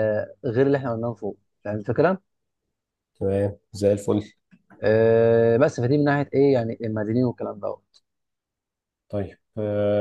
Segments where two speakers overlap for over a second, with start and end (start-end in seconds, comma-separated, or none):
none